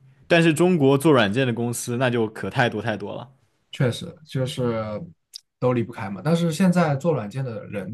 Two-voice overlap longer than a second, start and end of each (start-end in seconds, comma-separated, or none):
none